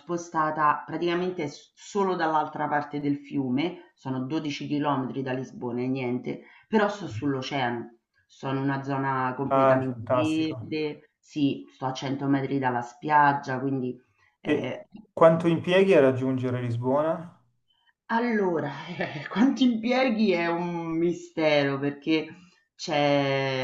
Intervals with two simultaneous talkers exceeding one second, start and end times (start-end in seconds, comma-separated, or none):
9.5-10.7